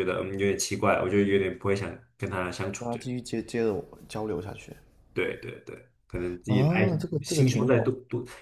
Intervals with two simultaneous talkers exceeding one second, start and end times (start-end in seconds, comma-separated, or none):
6.5-7.9